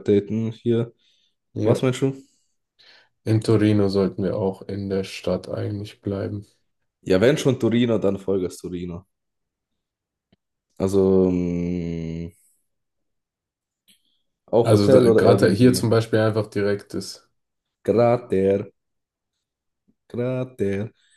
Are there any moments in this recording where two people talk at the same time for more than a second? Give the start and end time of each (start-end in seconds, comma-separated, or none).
14.6-15.9